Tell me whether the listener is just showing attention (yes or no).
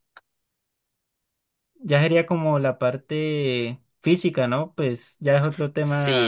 no